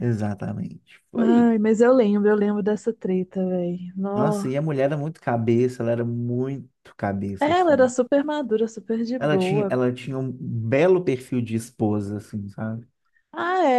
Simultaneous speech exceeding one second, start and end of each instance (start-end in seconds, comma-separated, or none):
none